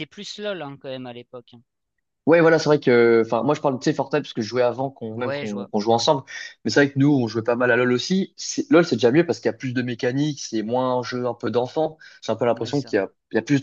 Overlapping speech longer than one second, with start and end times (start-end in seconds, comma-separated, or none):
none